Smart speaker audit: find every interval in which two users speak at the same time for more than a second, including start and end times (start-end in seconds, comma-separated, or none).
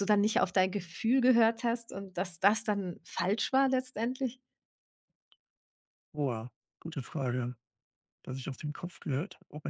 none